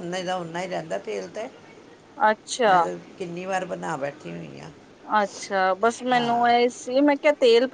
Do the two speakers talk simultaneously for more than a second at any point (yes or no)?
no